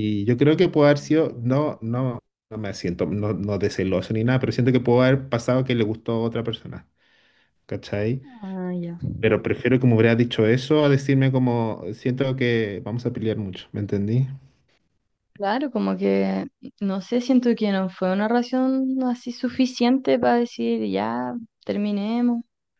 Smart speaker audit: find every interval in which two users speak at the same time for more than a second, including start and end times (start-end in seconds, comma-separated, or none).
none